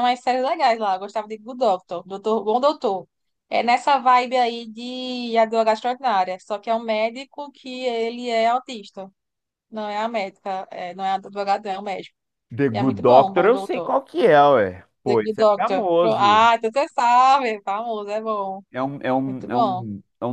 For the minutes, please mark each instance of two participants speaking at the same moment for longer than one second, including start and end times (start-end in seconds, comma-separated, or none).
12.7-13.9, 15.0-16.5